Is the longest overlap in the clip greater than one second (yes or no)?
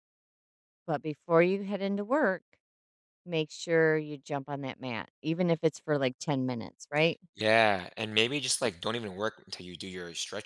no